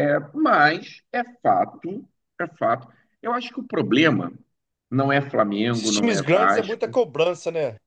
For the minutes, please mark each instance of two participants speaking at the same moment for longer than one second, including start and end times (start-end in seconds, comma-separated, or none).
5.7-7.0